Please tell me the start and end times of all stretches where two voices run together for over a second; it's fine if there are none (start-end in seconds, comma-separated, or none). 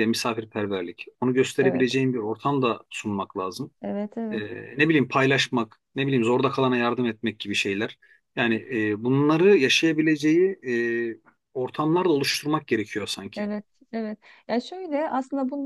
none